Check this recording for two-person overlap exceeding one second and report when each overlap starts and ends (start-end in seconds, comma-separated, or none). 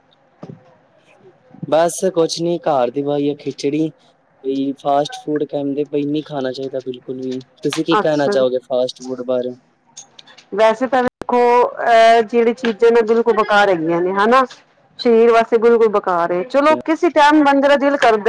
none